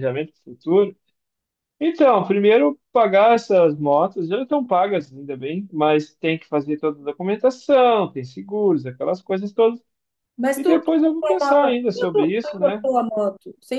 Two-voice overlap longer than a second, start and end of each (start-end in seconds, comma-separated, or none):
10.5-12.9